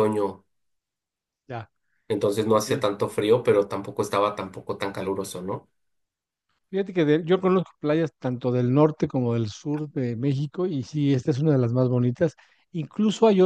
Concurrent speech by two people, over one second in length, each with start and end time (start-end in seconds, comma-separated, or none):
none